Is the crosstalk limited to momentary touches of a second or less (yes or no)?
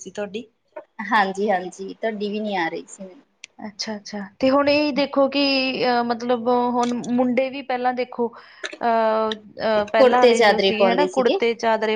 no